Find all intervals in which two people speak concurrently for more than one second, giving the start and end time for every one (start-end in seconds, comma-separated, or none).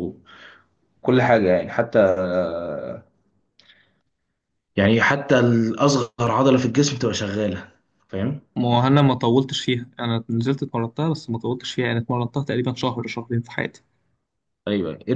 none